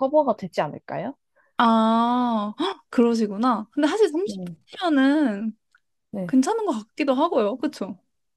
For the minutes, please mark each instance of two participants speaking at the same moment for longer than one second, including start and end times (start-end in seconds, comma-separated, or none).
none